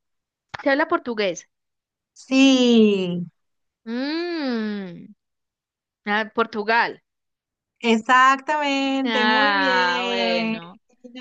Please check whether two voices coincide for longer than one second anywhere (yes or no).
yes